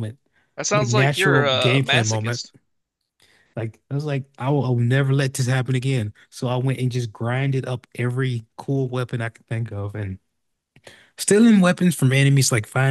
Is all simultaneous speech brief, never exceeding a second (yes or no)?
no